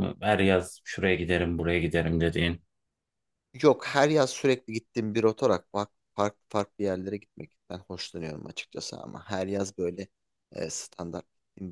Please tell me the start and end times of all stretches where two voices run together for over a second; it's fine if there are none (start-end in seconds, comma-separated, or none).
none